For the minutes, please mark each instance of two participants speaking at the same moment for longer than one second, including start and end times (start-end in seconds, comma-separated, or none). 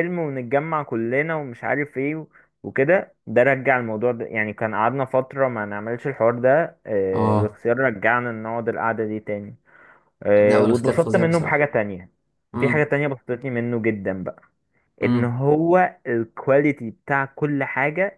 10.4-11.7